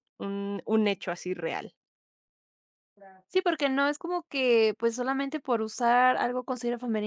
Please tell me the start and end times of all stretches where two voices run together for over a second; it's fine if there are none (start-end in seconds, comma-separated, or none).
none